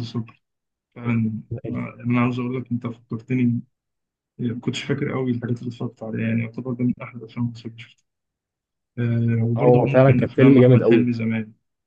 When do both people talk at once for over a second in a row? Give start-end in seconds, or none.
9.6-11.1